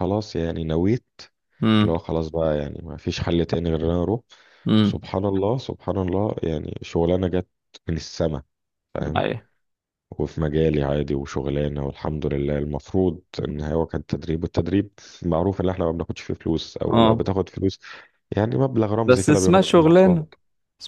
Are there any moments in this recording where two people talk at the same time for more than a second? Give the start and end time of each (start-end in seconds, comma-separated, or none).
19.0-20.2